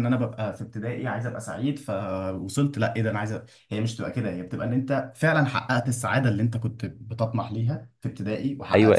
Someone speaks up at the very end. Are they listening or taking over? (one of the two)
taking over